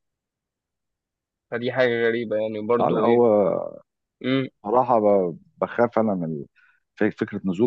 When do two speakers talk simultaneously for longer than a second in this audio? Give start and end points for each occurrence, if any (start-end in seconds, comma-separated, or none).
none